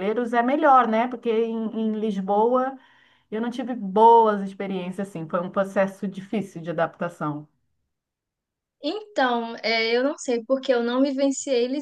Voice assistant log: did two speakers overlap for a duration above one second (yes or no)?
no